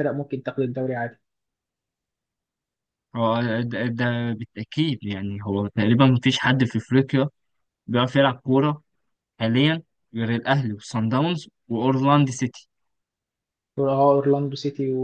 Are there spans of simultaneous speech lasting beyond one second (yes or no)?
no